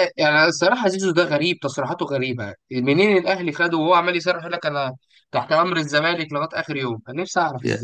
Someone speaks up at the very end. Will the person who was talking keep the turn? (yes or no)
no